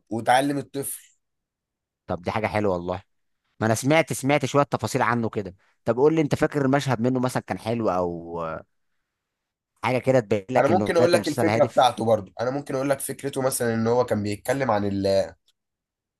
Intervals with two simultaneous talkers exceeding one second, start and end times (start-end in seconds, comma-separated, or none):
10.6-11.9